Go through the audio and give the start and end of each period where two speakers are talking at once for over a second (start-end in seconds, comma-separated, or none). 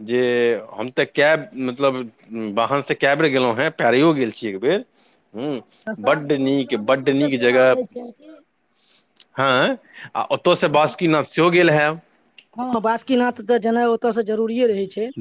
none